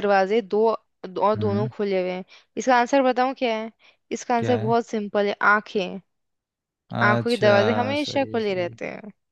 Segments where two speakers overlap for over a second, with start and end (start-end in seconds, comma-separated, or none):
7.1-8.8